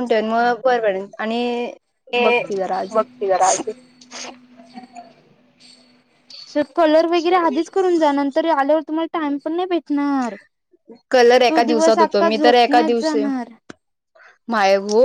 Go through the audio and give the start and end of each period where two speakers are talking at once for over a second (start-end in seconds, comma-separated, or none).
11.5-13.2